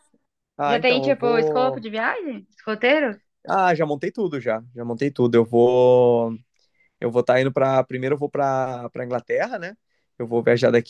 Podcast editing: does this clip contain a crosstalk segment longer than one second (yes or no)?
yes